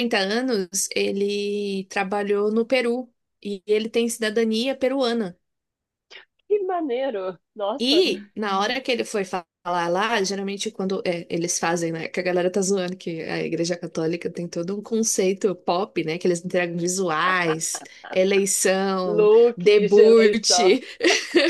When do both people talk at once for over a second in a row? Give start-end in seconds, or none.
19.0-20.8